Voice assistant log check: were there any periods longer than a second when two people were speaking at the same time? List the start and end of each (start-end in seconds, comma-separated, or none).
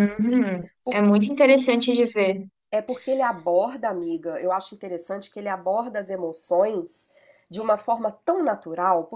none